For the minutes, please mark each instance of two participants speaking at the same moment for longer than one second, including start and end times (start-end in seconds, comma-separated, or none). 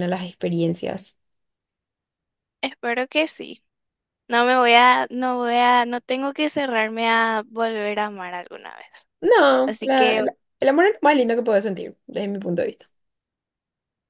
none